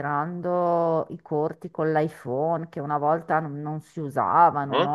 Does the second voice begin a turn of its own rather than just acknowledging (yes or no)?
yes